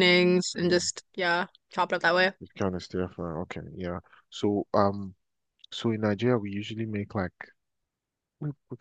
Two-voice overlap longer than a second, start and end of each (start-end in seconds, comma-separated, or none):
none